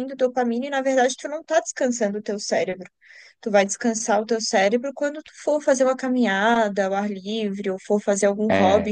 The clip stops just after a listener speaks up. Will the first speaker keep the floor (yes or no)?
yes